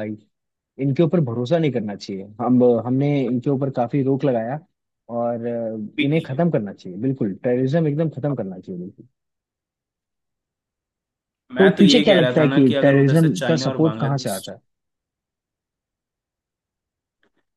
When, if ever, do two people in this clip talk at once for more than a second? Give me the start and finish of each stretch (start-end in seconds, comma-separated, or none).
11.6-14.4